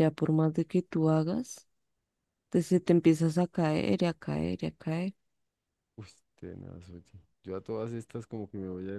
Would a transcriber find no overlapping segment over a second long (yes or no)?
yes